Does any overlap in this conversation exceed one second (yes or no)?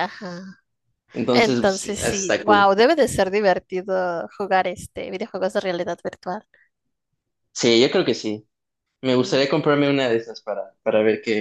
yes